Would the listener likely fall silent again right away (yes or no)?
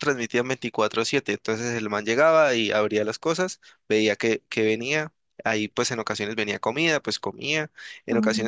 yes